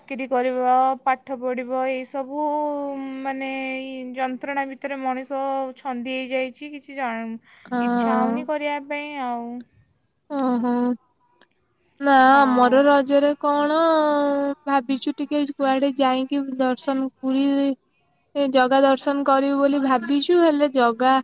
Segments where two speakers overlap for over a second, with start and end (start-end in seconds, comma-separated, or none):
none